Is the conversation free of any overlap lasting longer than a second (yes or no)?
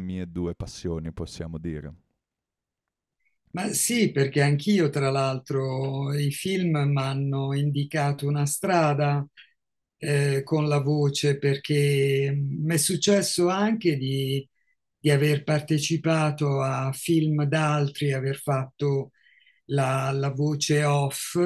yes